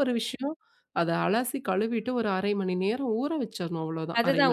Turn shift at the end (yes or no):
yes